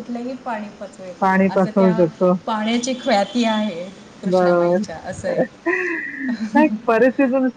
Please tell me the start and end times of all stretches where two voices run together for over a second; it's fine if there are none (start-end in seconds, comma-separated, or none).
none